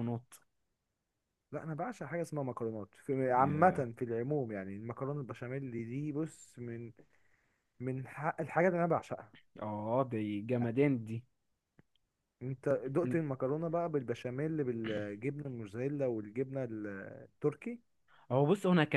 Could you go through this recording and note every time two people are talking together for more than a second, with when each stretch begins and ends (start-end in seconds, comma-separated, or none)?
none